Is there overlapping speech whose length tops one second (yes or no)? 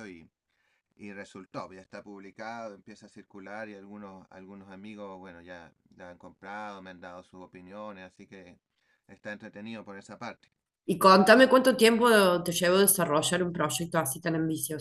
no